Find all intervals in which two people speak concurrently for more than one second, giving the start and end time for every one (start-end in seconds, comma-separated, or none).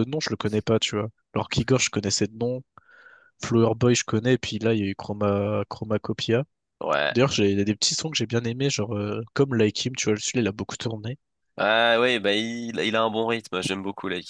none